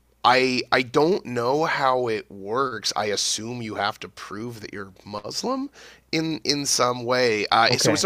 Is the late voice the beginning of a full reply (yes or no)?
no